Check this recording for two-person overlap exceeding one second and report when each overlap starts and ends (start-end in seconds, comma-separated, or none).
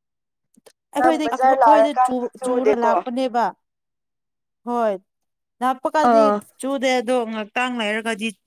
1.0-2.9